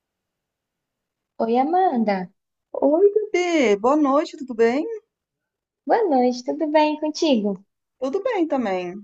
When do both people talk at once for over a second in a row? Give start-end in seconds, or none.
none